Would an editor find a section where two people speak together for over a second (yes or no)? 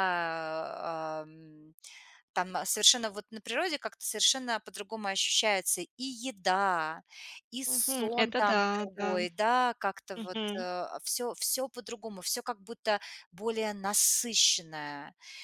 yes